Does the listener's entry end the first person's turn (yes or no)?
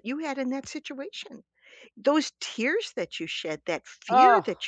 no